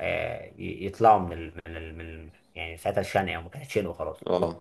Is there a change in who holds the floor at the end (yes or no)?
no